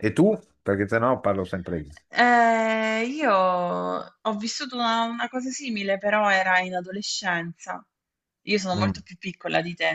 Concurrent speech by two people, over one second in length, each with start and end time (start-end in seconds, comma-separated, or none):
none